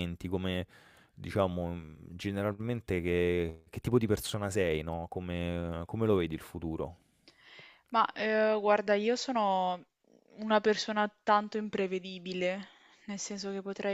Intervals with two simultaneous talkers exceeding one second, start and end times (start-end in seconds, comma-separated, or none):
none